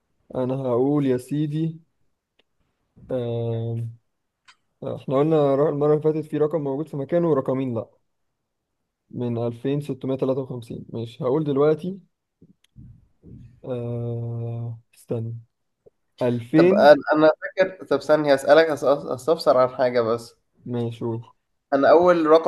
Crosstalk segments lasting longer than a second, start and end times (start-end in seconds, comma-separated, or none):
none